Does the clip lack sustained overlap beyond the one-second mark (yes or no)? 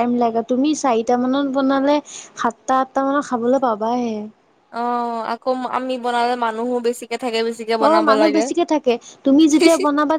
yes